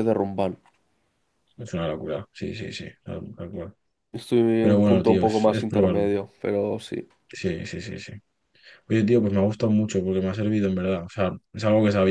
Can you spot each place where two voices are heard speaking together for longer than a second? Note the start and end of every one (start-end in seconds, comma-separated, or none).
4.6-6.1